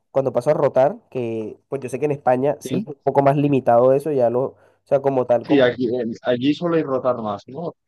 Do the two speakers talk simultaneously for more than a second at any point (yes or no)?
no